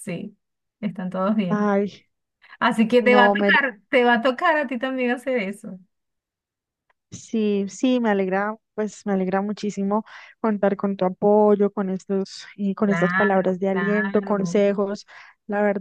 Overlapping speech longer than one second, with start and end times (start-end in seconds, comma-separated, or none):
12.8-14.6